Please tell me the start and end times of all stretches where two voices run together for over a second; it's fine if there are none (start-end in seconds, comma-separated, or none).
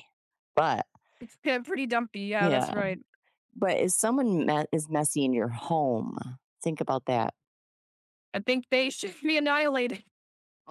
none